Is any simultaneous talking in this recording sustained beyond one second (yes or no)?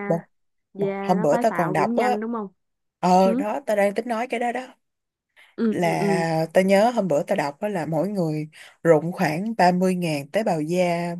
yes